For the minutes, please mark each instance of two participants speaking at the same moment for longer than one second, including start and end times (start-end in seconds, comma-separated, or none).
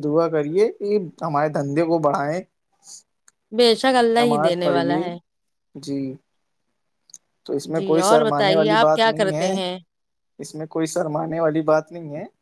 7.8-9.5